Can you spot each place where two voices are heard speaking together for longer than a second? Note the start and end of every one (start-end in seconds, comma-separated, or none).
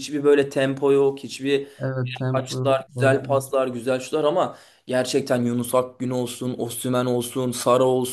2.3-3.5